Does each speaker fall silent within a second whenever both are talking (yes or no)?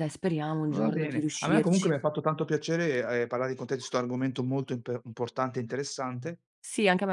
no